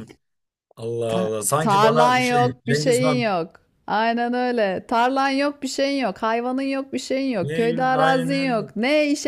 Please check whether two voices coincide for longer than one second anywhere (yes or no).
yes